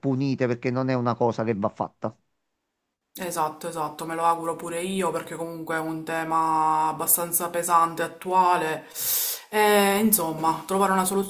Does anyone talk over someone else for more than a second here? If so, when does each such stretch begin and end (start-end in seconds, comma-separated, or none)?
none